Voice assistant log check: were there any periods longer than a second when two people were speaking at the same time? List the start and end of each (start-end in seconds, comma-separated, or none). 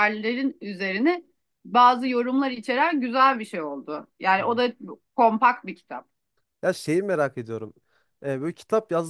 none